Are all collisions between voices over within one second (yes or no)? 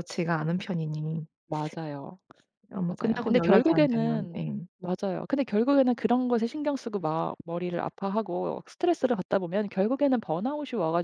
no